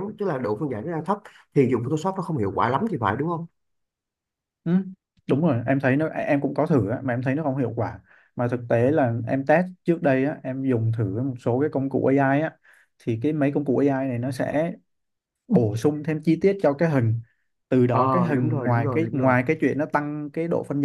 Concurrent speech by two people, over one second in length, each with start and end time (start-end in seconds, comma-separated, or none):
17.9-19.3